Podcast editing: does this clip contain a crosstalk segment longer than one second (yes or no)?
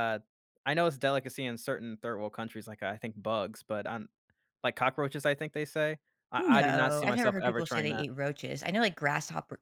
yes